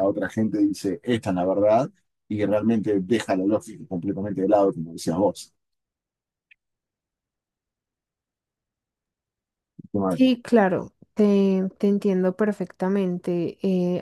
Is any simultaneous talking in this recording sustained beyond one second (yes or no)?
no